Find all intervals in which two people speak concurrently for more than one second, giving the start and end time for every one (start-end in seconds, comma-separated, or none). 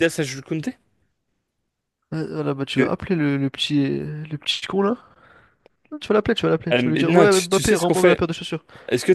6.7-8.3